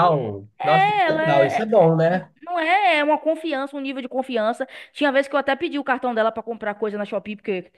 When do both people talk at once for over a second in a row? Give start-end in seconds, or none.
0.6-1.9